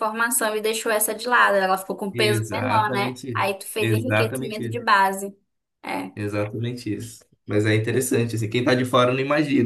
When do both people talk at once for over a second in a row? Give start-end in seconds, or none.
2.1-4.8